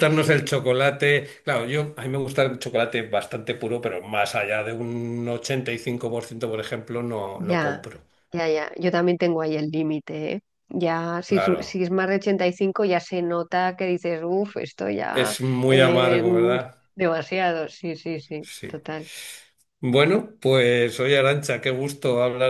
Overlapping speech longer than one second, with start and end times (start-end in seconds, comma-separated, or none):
15.1-16.6